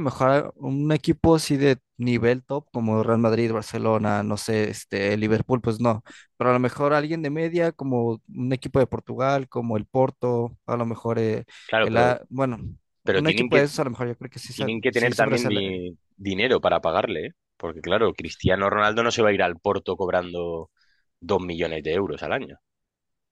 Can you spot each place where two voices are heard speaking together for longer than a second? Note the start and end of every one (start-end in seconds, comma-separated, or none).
14.5-15.8